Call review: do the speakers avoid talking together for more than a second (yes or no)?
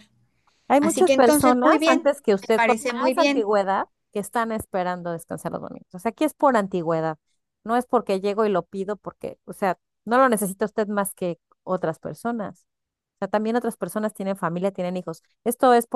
no